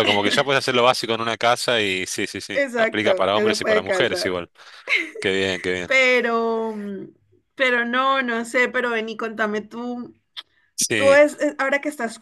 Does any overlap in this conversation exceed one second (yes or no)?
yes